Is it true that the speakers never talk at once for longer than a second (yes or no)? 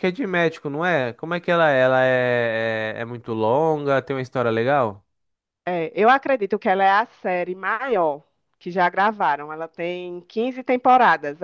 yes